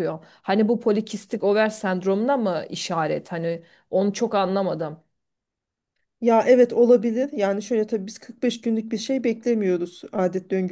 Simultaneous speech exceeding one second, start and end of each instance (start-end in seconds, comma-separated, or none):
none